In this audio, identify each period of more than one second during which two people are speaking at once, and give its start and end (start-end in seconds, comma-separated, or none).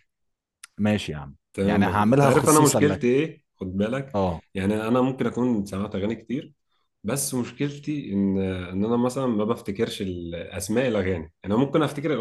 1.5-3.1